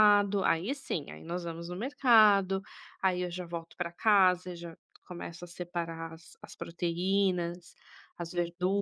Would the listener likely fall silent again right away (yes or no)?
no